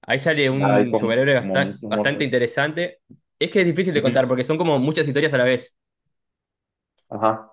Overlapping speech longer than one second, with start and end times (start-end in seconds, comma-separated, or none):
0.7-2.4